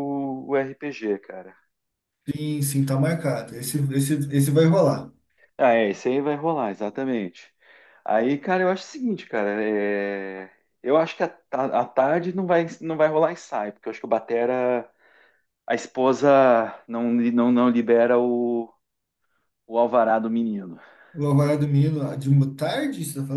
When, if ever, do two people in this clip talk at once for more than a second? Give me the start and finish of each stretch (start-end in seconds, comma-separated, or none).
none